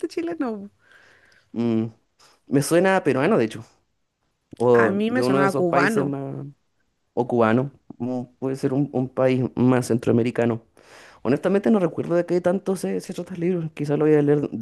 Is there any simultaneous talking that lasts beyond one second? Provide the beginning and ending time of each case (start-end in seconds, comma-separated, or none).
4.7-6.1